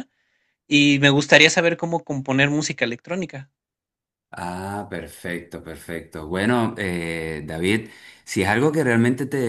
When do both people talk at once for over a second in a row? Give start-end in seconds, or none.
none